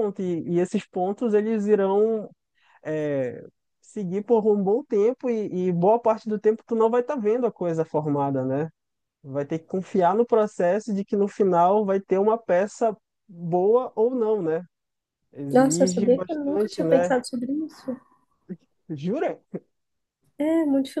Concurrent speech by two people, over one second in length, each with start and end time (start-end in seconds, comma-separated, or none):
15.5-17.1